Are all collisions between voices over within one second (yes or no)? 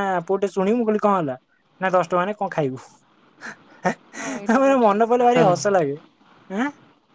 no